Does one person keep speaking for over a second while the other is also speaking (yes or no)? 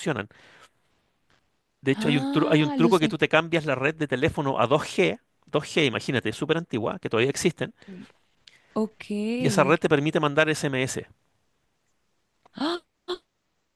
yes